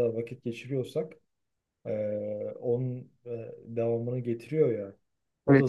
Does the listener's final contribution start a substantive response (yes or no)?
yes